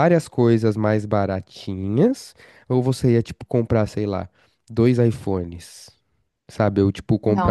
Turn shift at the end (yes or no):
yes